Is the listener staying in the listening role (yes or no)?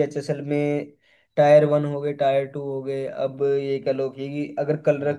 yes